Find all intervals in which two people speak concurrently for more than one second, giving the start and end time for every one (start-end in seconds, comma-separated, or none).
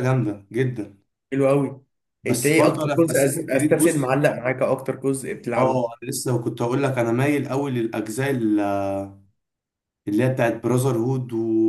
2.3-4.1